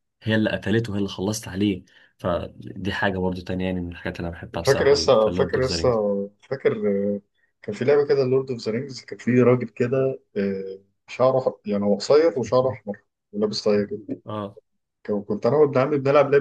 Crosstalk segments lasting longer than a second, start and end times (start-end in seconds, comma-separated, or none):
4.7-5.9